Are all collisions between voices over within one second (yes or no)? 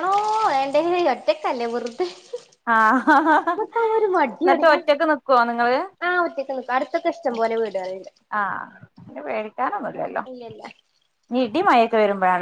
yes